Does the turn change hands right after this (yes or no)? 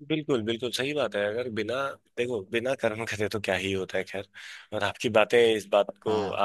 no